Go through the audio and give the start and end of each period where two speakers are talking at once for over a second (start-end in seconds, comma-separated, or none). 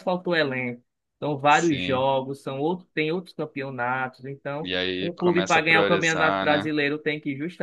4.6-6.7